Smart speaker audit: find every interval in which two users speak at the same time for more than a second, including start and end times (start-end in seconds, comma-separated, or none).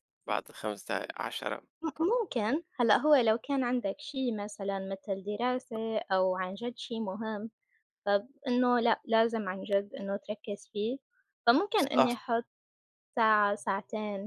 none